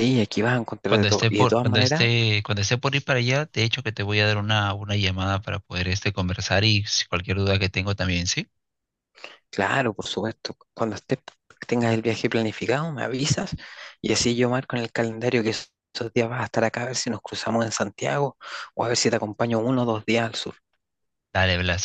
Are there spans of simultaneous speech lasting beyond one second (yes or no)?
yes